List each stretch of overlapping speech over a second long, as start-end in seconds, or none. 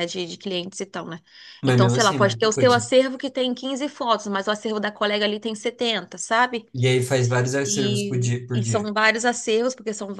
1.6-2.9, 7.6-8.9